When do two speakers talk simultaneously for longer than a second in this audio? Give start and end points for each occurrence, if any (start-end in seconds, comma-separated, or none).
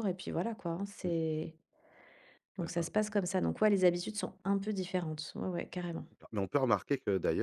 none